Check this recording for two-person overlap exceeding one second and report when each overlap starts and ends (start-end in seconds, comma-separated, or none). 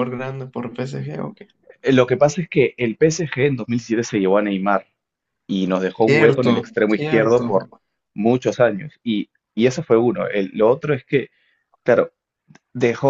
6.0-7.5